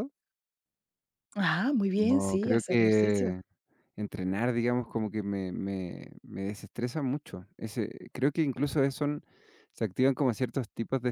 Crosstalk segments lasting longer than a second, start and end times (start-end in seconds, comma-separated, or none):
2.0-3.4